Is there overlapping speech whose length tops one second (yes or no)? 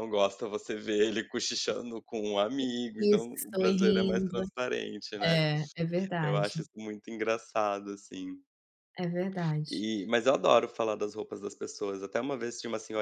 yes